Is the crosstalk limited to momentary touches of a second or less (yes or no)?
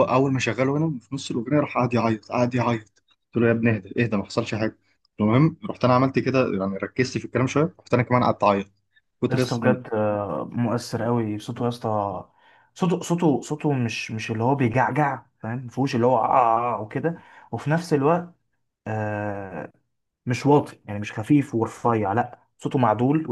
yes